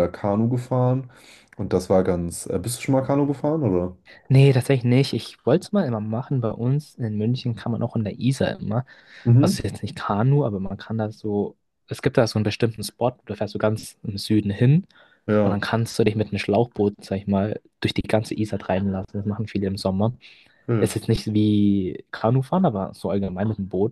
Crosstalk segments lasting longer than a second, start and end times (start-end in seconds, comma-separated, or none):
none